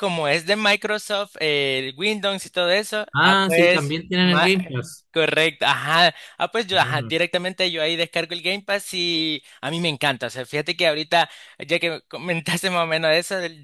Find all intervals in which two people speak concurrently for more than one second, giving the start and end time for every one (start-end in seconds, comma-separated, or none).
3.1-4.5